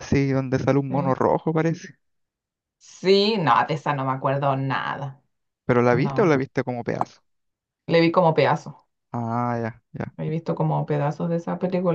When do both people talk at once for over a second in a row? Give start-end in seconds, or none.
none